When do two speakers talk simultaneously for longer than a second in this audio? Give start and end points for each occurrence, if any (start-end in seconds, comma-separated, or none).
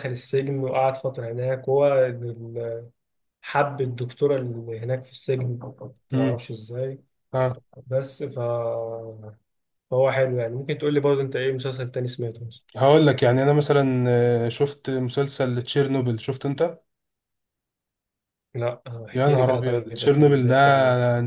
19.1-20.6